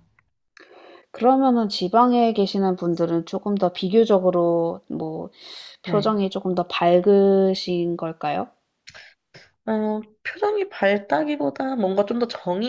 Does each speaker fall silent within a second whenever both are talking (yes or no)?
yes